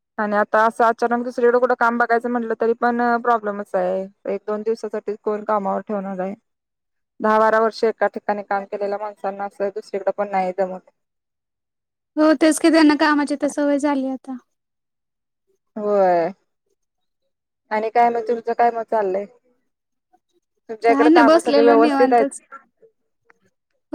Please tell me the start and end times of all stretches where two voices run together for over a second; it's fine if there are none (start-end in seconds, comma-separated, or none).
20.8-22.4